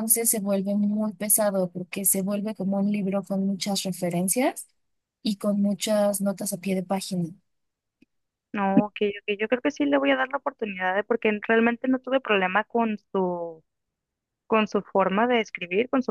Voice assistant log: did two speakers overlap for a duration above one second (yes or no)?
no